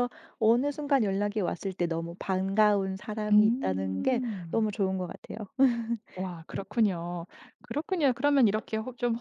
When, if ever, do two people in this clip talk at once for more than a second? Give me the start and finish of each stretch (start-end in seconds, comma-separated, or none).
3.3-4.7